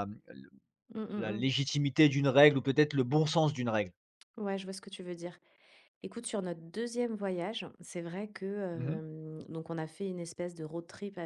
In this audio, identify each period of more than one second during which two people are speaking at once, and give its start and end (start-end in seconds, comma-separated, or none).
none